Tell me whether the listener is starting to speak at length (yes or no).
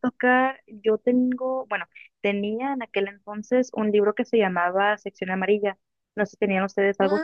yes